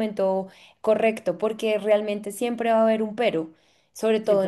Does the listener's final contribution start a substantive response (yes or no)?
no